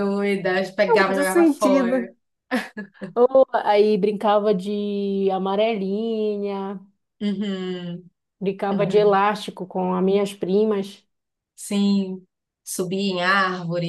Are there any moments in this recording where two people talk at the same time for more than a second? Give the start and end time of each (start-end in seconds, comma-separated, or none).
0.9-2.1